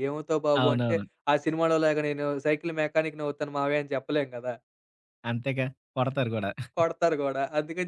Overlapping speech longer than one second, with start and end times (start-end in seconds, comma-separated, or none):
none